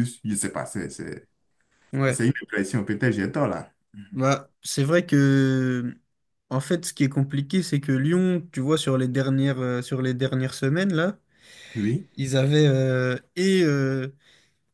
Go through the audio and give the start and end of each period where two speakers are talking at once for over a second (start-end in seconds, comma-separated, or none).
none